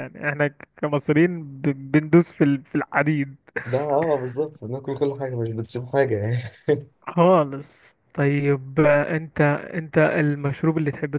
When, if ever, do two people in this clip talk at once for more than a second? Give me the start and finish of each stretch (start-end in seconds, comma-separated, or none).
none